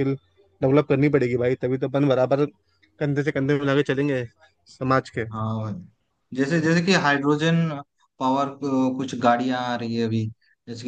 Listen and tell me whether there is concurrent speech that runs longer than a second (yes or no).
no